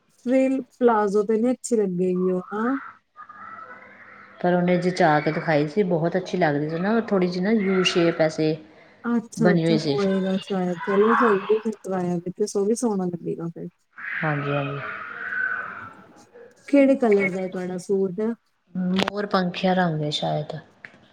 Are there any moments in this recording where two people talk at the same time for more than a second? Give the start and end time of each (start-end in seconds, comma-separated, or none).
none